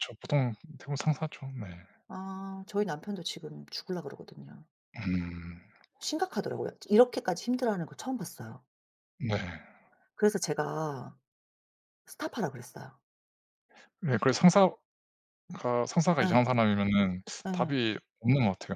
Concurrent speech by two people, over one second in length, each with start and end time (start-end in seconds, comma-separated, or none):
none